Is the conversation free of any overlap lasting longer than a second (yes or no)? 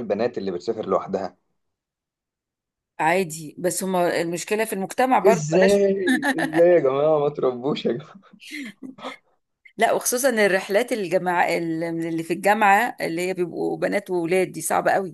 yes